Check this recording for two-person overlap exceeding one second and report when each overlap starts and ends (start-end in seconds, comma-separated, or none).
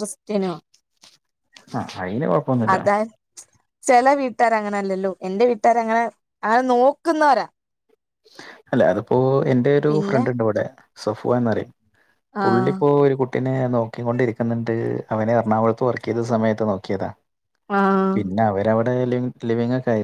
none